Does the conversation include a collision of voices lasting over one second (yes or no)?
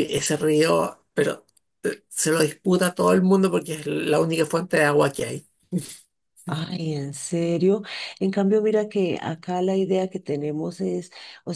no